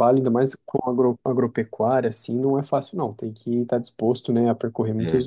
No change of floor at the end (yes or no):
yes